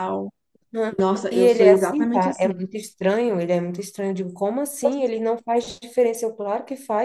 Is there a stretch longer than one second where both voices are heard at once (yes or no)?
yes